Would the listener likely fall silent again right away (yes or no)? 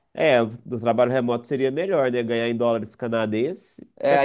no